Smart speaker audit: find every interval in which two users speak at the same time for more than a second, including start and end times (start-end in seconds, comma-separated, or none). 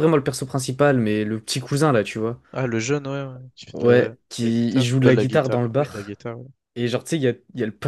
3.7-6.1